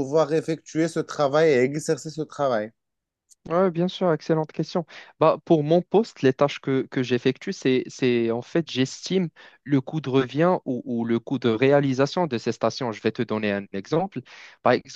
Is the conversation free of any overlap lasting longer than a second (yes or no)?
yes